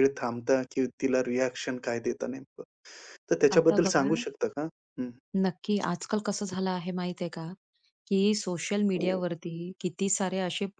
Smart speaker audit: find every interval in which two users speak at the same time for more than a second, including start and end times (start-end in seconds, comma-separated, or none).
none